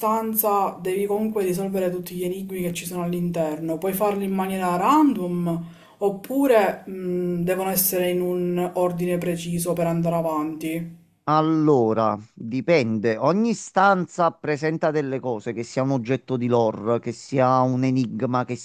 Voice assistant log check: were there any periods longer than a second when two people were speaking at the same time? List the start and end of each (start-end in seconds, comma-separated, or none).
none